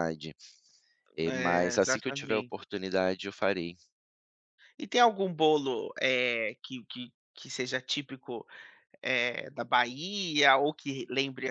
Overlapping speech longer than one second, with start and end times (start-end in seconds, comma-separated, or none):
1.2-2.5